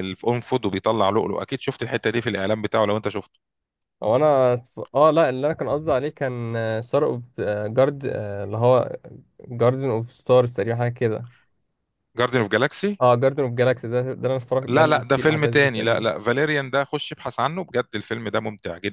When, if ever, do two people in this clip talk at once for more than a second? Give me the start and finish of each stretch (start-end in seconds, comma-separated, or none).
14.7-16.1